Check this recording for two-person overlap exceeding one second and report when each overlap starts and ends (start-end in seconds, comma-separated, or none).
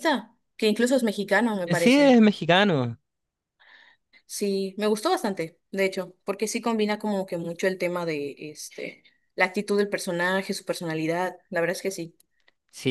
none